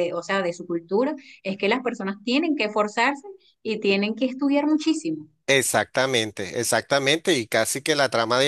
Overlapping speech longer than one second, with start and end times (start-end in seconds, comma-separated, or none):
none